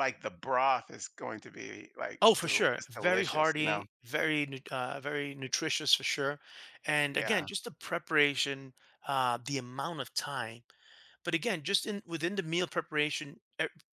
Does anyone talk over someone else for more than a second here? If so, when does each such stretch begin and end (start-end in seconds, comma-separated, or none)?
2.2-3.8